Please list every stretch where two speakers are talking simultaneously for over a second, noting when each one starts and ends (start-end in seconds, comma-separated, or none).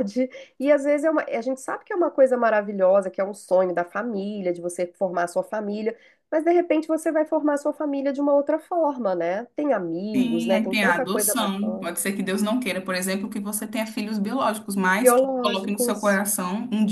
10.2-11.9, 15.0-16.2